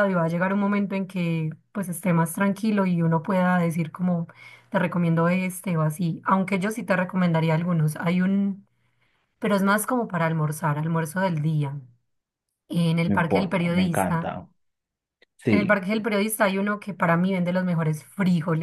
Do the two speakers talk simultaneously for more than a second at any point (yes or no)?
yes